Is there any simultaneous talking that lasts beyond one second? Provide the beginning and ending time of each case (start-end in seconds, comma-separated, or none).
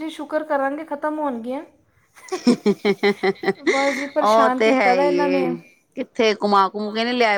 4.2-5.4